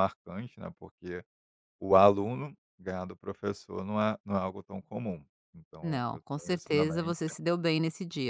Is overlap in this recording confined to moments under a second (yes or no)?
no